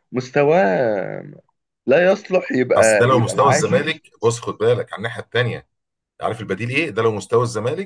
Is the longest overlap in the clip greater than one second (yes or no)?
yes